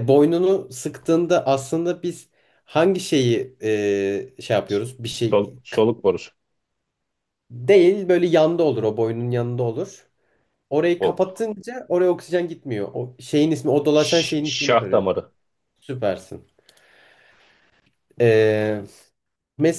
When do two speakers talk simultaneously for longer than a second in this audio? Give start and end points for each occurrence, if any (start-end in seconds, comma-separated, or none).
13.9-15.1